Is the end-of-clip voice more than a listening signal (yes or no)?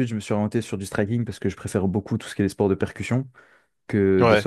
no